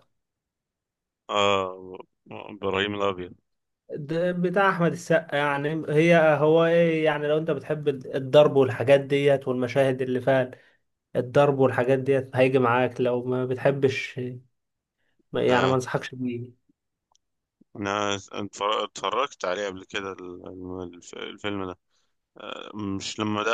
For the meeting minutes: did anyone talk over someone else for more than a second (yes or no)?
no